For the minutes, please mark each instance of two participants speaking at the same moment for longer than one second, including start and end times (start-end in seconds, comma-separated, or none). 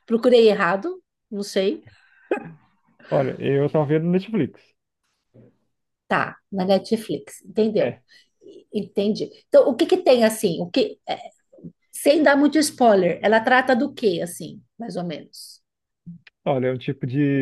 none